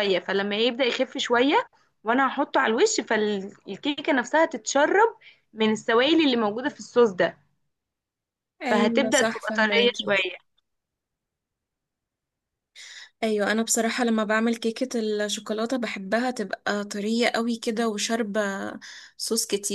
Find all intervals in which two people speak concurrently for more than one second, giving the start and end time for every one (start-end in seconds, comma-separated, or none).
8.7-10.2